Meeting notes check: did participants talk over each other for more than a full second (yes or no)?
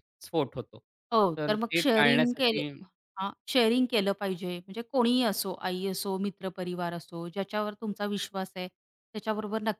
yes